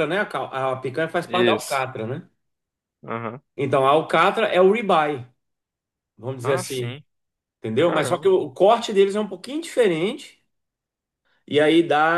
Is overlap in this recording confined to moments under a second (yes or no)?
yes